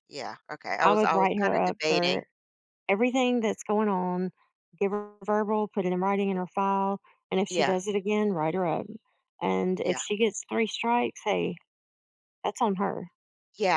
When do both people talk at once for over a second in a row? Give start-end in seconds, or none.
0.8-2.2